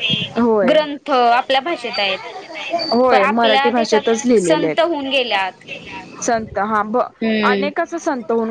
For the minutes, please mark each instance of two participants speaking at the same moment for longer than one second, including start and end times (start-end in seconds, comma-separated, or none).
3.1-5.6